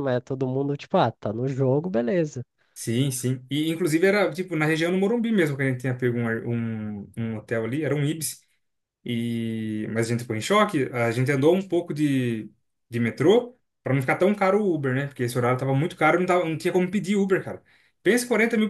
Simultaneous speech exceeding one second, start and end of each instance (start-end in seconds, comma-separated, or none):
none